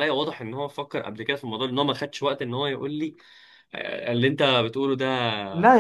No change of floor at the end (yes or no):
no